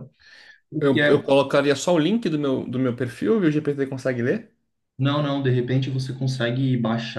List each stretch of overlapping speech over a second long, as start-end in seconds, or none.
none